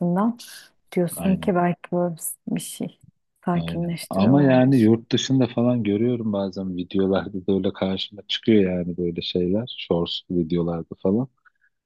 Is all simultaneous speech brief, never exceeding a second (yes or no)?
no